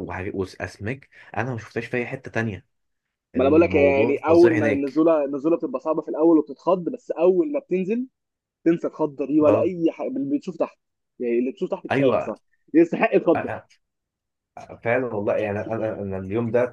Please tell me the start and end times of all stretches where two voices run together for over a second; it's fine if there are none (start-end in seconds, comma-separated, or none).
3.4-5.0